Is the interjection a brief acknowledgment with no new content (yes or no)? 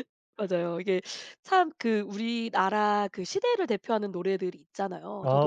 yes